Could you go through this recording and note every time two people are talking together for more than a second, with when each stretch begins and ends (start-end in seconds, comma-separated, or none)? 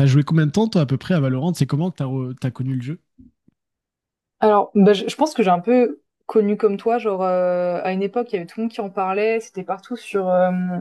none